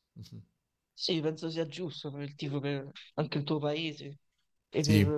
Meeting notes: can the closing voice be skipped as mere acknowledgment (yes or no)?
yes